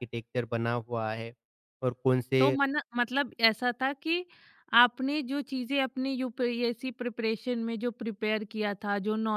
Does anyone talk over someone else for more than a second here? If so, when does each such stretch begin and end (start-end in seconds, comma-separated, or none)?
none